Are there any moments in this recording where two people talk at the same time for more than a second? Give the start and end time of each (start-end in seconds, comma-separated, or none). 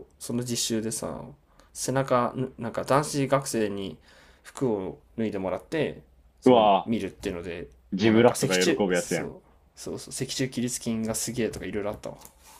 7.9-9.3